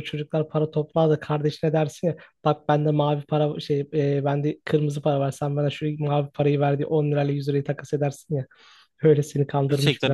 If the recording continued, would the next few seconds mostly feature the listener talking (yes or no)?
yes